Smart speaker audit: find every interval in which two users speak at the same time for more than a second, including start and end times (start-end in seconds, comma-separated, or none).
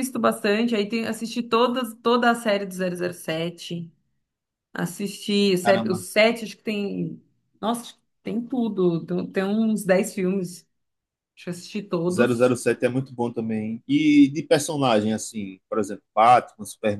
none